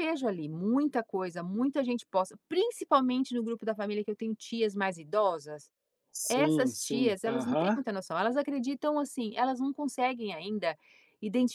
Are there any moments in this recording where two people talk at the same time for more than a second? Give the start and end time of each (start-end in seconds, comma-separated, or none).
6.3-7.8